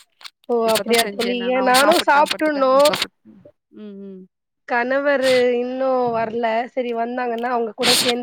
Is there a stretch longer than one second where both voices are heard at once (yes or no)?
yes